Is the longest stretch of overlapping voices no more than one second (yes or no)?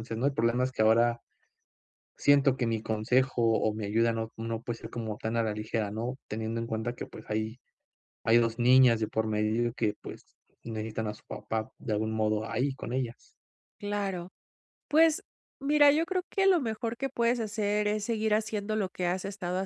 yes